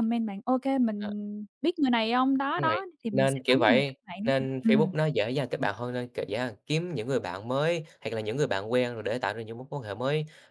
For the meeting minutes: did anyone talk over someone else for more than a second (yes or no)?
yes